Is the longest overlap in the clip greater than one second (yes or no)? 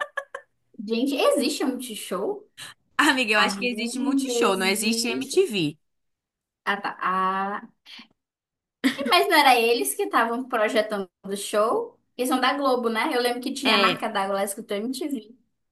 yes